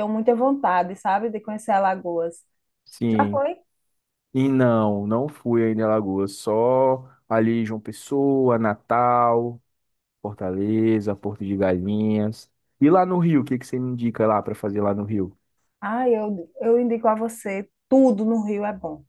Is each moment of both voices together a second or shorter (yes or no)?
yes